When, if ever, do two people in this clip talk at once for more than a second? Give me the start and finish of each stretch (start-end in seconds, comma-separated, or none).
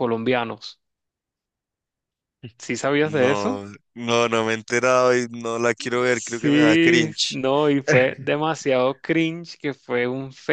6.1-7.4